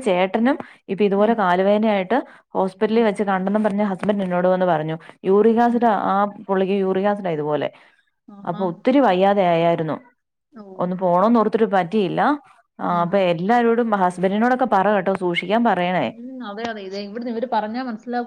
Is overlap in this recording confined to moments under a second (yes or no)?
yes